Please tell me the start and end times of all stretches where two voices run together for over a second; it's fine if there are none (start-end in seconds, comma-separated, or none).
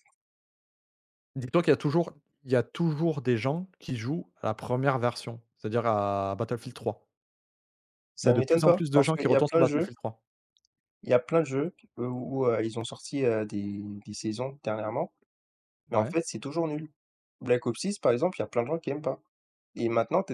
8.2-9.9